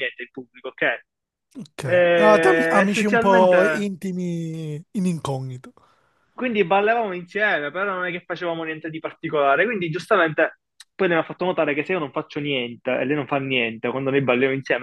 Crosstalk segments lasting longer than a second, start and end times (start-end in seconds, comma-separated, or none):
1.8-3.6